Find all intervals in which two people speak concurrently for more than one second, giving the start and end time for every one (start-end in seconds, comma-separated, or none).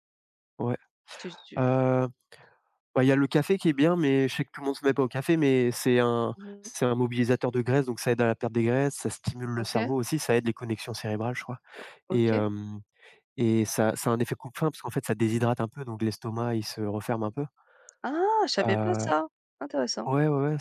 none